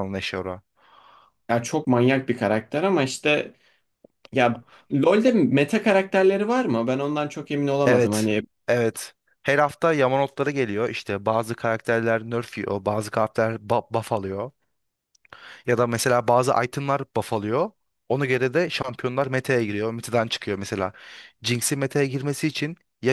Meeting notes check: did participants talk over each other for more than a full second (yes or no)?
no